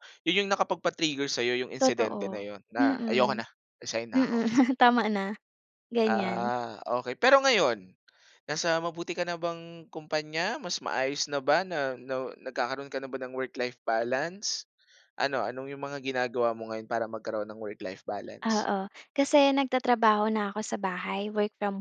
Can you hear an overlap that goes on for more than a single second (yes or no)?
yes